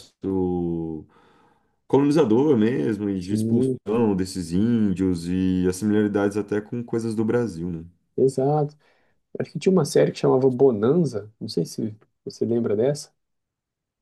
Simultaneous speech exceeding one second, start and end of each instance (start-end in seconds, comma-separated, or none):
none